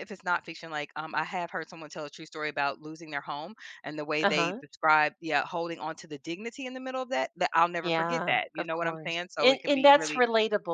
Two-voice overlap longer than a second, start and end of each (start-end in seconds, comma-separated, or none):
7.8-10.2